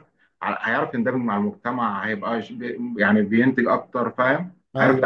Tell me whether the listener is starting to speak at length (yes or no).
yes